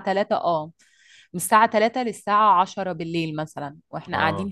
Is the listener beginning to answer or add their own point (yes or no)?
yes